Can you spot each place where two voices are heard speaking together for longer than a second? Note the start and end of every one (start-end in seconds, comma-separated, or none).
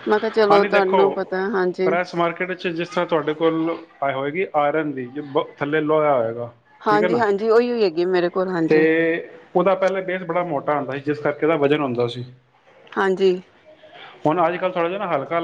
none